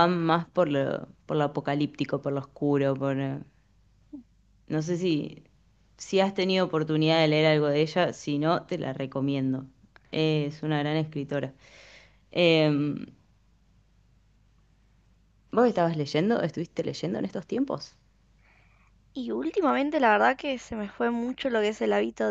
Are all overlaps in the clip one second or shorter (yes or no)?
yes